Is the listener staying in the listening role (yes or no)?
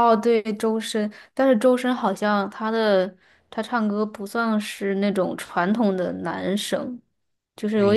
no